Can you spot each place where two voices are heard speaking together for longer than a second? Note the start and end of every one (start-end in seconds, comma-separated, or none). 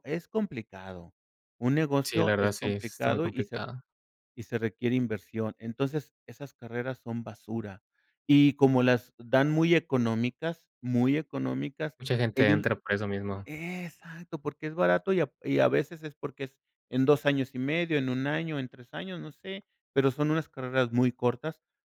2.0-3.7